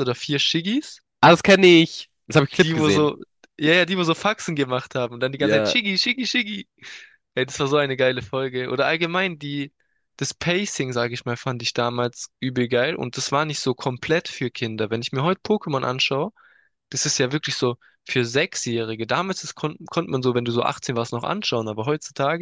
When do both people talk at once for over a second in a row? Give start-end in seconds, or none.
none